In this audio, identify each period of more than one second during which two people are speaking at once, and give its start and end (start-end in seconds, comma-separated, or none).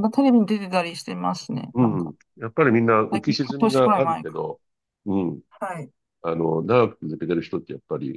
3.1-4.5